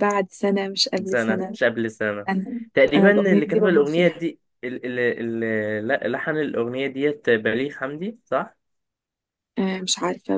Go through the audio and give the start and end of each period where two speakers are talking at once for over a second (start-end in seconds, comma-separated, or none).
2.7-4.3